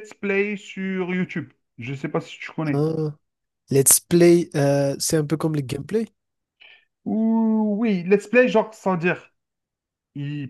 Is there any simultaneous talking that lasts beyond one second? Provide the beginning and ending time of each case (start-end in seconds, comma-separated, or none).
none